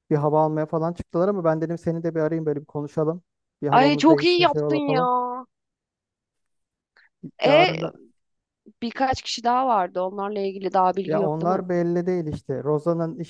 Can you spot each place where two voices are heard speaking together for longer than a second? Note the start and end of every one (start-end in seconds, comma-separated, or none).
3.7-5.0